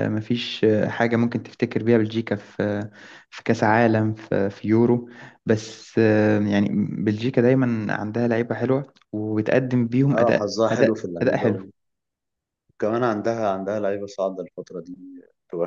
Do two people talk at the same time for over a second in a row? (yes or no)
yes